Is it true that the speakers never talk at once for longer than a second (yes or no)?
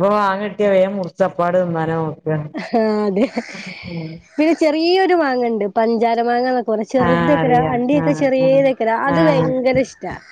no